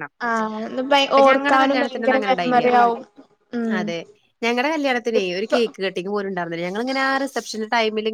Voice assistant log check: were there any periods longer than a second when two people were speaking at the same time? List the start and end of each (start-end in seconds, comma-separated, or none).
1.1-2.7